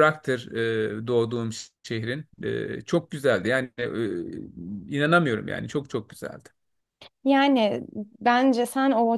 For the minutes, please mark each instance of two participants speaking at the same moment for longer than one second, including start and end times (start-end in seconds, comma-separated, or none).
none